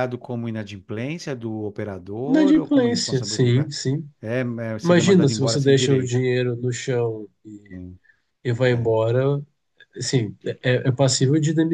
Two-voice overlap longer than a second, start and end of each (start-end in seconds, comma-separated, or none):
2.3-3.7, 4.8-6.2